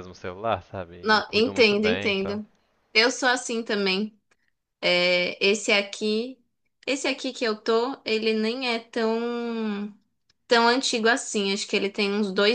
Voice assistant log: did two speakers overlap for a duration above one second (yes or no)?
yes